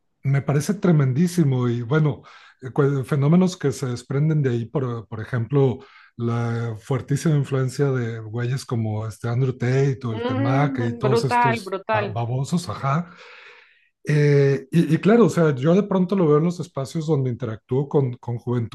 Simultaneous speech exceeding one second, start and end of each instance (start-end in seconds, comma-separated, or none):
10.1-12.2